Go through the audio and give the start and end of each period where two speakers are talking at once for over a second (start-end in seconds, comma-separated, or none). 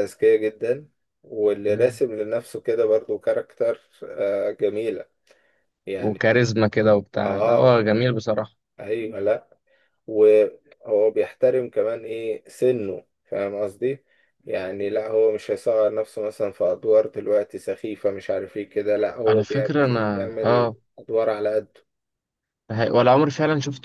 19.3-20.8